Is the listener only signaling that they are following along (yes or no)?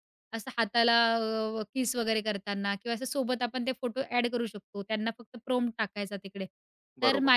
yes